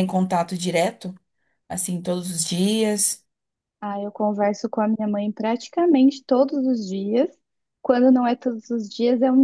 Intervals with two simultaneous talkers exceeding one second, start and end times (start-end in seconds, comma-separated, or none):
none